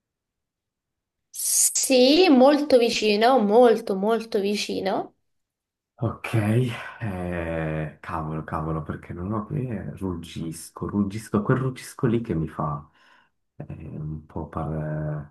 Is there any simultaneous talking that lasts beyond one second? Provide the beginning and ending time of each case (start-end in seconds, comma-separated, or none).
none